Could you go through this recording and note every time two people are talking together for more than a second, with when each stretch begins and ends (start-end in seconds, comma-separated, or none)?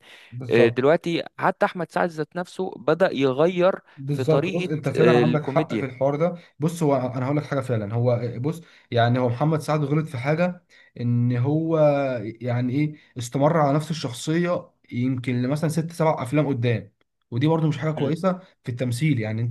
4.0-5.9